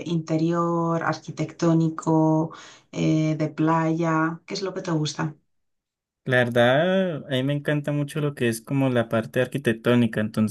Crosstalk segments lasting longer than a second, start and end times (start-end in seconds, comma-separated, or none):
none